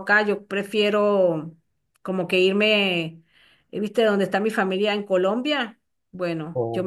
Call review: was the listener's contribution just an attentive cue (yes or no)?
yes